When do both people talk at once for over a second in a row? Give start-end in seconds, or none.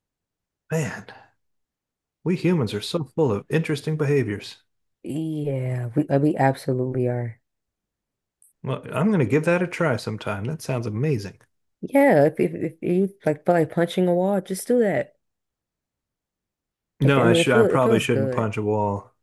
17.0-18.5